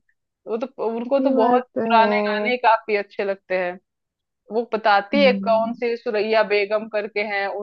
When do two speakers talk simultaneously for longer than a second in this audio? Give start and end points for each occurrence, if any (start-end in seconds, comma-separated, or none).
1.2-2.5